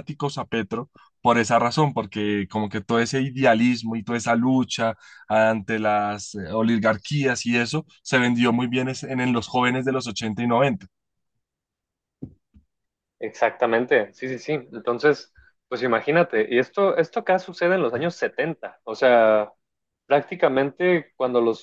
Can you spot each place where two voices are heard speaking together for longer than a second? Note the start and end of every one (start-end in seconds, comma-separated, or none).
none